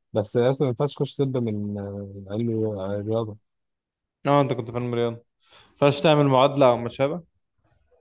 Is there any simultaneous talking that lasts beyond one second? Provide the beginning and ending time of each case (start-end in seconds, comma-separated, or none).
none